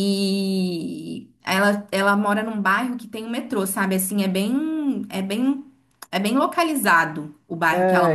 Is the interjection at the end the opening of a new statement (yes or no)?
yes